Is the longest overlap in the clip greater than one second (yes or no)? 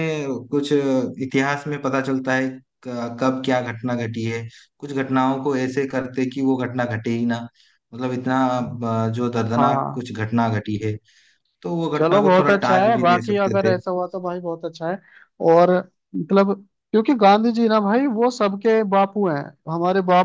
yes